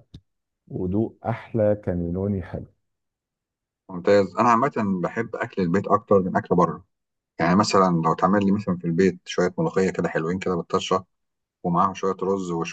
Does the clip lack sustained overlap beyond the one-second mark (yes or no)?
yes